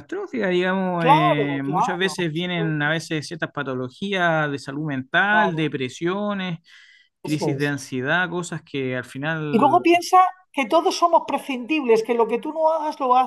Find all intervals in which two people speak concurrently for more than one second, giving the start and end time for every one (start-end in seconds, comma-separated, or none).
1.0-3.0